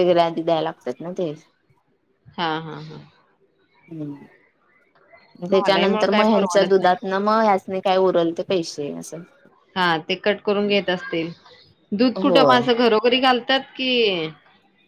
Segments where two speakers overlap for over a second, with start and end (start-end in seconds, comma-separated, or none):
5.5-7.0